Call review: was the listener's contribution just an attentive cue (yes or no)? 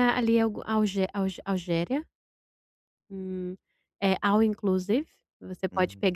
yes